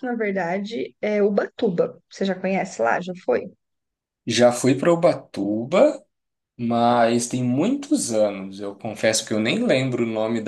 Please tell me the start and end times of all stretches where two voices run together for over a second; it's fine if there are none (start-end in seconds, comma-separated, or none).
none